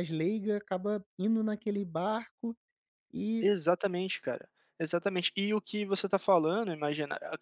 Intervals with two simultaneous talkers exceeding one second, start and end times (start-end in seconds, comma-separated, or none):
none